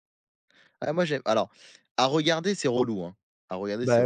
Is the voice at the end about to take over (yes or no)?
yes